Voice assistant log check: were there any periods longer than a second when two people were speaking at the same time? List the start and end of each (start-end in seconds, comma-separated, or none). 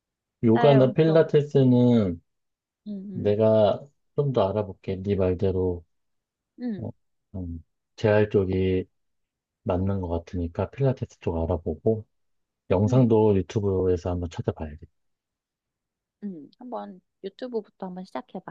0.5-1.8